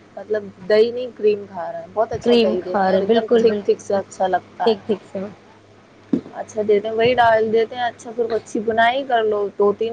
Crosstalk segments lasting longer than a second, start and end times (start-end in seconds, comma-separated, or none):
2.2-3.8